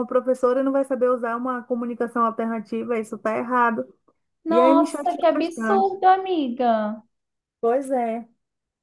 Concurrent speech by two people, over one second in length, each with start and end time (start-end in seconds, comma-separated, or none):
4.5-5.9